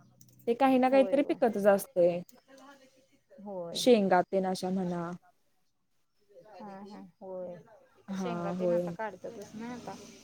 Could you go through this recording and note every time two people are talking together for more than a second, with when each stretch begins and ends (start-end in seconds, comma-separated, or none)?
none